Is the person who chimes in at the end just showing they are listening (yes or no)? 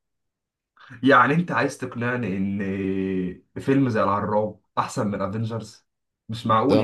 no